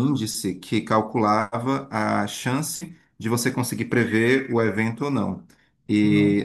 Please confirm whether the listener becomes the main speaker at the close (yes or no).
no